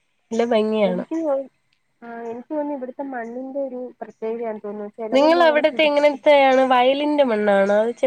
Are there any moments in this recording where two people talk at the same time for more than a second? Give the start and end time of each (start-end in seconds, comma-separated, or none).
none